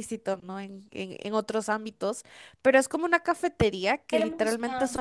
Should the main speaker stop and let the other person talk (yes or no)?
no